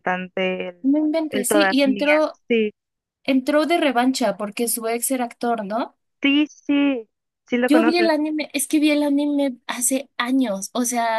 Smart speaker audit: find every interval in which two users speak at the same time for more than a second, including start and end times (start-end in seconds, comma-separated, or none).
0.8-2.4